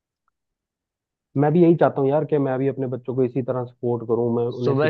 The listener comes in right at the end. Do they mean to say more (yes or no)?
yes